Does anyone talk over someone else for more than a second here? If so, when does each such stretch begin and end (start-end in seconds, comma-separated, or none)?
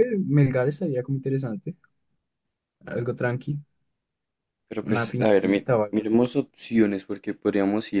4.8-6.3